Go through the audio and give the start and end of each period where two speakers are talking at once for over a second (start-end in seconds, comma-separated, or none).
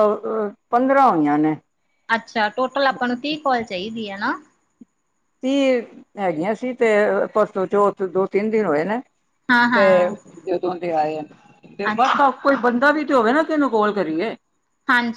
none